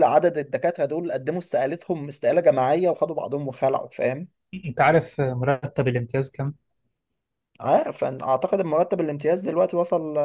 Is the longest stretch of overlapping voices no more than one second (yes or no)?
yes